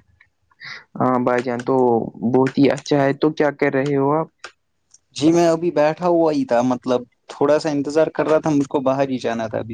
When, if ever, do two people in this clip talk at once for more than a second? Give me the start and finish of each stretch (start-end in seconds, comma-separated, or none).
none